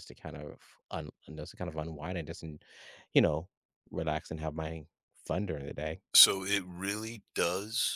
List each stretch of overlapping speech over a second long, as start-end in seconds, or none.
none